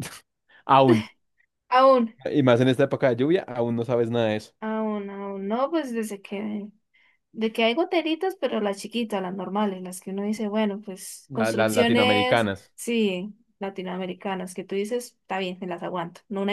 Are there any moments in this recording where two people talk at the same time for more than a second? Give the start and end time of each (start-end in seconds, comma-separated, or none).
11.3-12.7